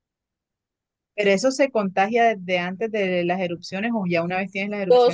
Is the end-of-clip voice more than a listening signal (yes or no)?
yes